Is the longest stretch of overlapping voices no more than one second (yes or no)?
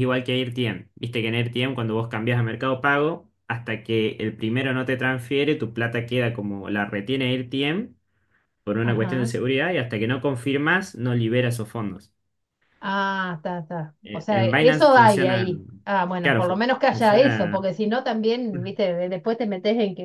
no